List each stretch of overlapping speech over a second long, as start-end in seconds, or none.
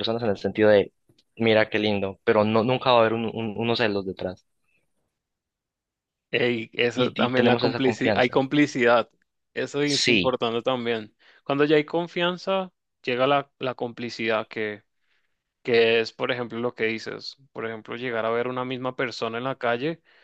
6.9-8.4